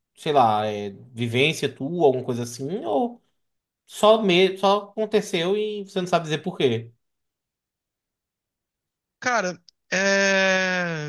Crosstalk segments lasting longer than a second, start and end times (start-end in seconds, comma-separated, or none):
none